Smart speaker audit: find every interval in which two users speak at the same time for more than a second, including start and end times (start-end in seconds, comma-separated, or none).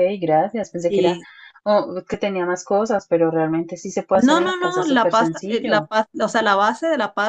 4.1-5.9